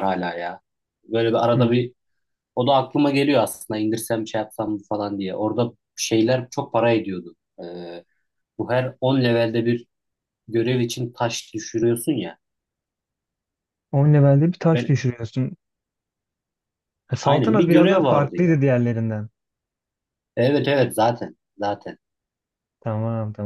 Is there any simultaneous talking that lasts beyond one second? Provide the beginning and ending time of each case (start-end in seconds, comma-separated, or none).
17.2-18.6